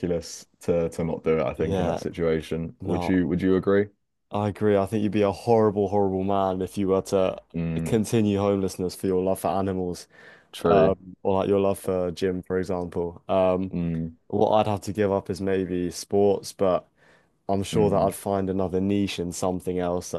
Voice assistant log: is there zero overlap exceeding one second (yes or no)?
yes